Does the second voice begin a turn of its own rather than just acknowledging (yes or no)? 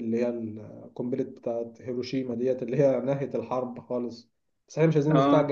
no